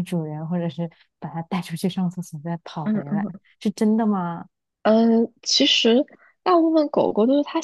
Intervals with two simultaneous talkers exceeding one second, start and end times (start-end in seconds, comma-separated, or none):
none